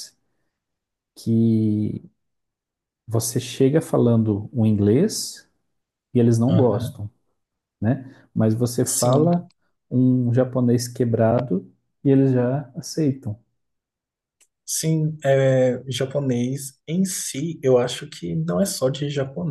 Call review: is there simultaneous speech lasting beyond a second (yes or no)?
no